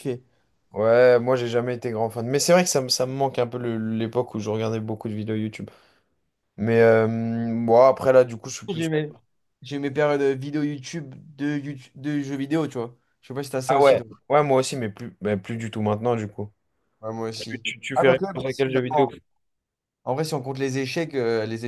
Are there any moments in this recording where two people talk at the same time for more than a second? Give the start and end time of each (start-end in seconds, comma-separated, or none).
17.3-19.1